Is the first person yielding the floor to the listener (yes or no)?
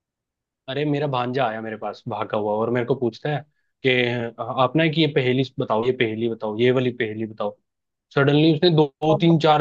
no